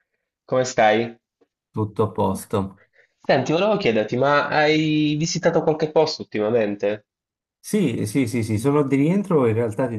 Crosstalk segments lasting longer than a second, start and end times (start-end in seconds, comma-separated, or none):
none